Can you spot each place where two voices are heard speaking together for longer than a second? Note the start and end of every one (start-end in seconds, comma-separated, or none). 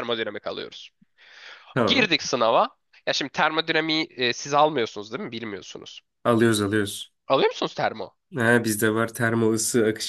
none